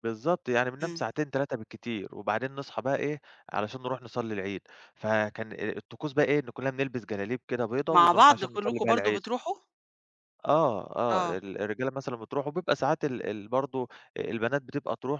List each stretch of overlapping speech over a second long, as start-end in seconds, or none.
7.9-9.2